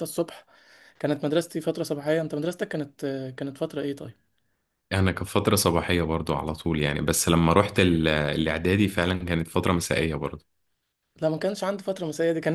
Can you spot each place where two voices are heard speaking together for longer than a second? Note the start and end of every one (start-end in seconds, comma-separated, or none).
none